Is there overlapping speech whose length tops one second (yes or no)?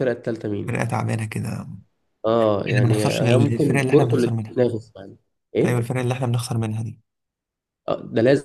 yes